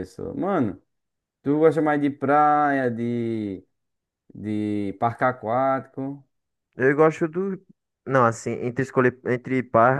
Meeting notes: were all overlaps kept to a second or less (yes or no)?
yes